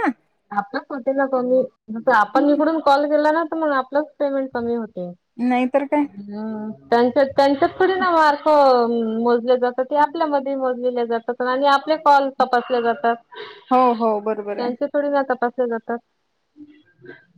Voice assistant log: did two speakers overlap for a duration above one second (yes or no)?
no